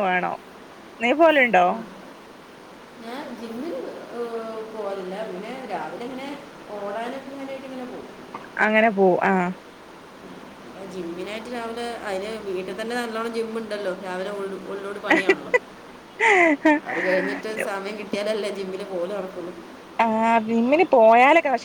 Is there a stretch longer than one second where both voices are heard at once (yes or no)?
no